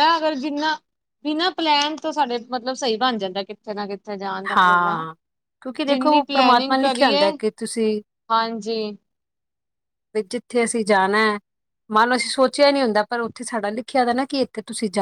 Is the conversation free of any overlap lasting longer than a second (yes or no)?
no